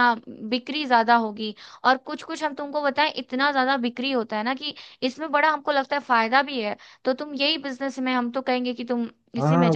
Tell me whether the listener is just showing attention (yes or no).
no